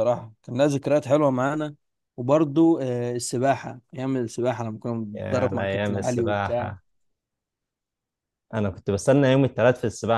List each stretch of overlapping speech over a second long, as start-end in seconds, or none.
5.2-6.8